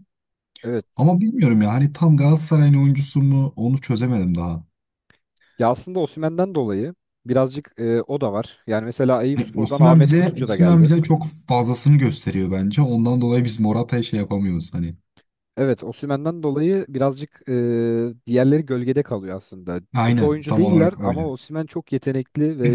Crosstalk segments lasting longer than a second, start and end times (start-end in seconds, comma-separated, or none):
9.3-10.9, 19.9-21.3